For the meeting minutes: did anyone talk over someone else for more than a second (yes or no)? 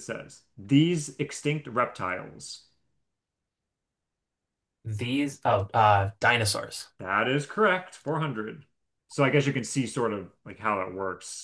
no